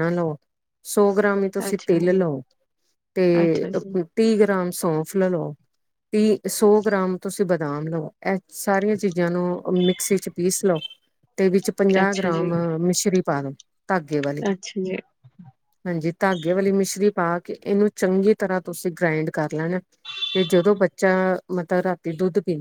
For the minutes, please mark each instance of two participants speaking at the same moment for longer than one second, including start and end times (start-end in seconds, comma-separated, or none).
none